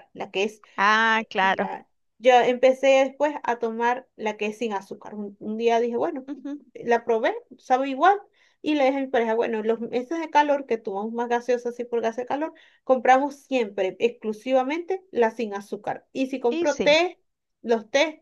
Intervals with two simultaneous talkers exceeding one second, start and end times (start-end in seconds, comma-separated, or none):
none